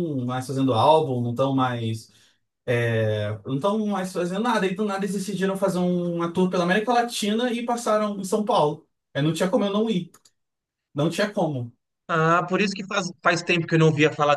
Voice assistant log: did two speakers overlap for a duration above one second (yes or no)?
no